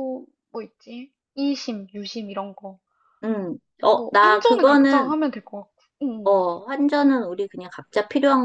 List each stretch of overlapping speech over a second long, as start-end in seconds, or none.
3.9-5.2